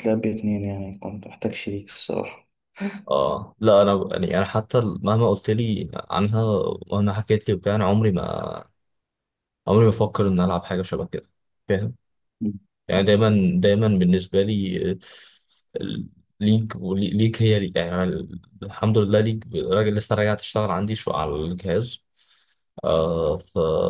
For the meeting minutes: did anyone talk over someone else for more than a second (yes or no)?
no